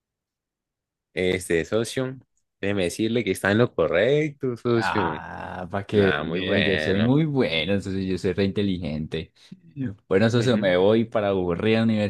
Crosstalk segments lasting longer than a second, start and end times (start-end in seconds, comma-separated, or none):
5.9-7.1